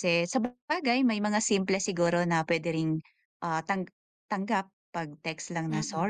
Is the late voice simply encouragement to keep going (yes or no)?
yes